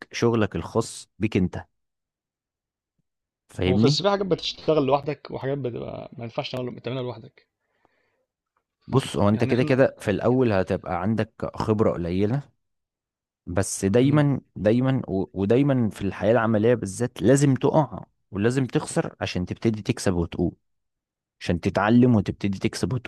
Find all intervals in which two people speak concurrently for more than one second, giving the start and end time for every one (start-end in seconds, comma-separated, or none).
none